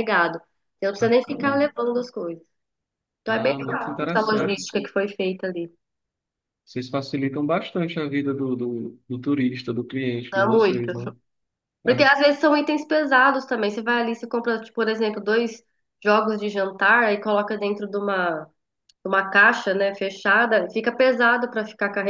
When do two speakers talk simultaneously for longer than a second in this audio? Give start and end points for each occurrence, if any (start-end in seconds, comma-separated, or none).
3.3-4.7